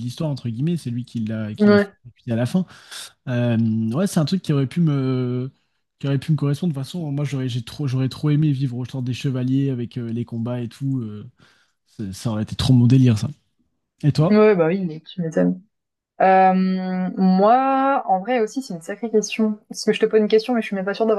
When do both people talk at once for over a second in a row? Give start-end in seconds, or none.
none